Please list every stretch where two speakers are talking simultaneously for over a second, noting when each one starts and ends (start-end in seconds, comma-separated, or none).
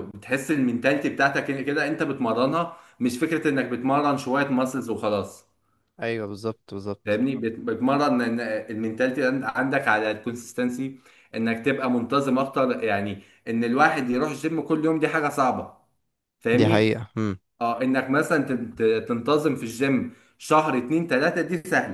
none